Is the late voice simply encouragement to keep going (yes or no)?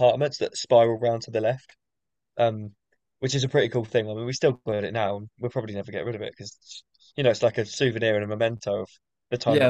no